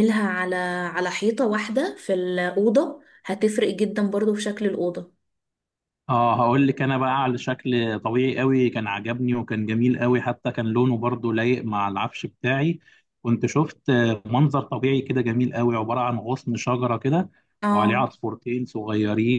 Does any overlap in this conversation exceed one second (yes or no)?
no